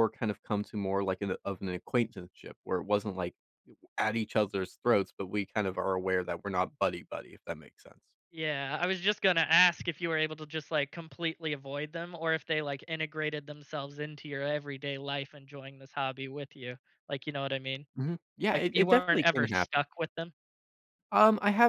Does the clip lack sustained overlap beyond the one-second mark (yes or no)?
no